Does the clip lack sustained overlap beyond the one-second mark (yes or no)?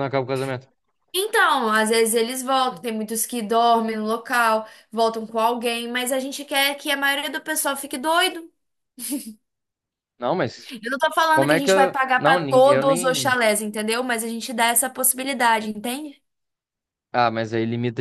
no